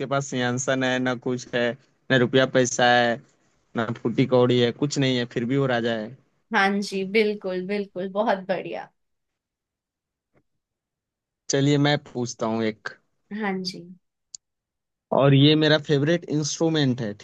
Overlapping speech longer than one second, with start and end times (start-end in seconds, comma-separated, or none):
none